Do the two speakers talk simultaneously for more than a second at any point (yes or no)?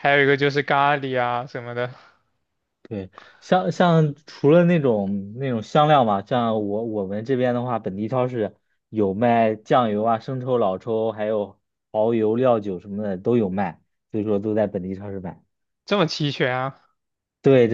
no